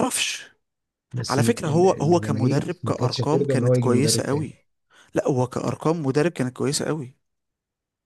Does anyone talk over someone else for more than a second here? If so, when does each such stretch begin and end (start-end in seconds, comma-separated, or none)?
1.3-4.5